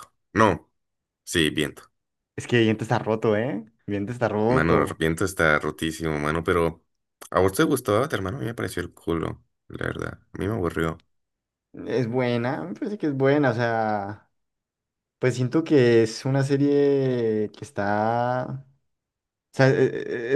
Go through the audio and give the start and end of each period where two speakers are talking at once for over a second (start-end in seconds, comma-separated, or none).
none